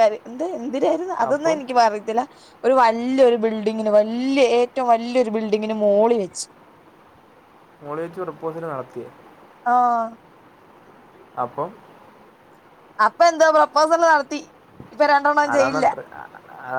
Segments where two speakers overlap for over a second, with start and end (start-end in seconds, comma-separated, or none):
none